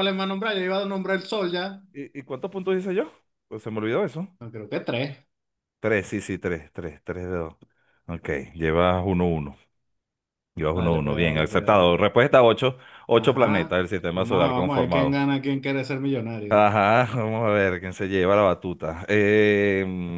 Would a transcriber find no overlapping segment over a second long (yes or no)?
no